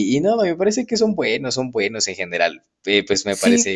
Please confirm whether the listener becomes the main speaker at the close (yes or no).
no